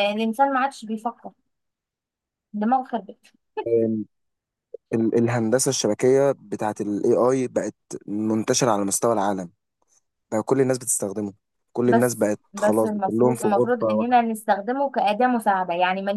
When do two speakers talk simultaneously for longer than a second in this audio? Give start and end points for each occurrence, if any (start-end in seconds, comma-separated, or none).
11.8-14.2